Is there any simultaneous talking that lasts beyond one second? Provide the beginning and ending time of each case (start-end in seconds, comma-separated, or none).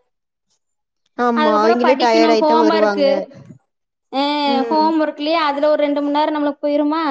1.4-3.0